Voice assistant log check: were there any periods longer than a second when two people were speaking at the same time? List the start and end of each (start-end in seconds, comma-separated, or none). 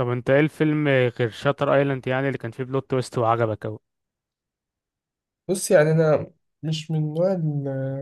none